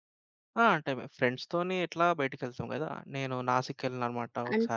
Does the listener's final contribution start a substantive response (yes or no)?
yes